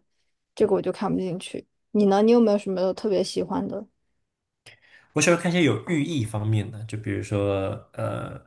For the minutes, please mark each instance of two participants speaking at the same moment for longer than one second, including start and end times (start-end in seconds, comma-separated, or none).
none